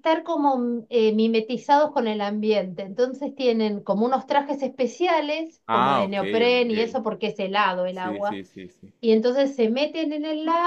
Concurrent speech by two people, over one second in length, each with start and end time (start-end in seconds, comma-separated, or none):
5.7-7.0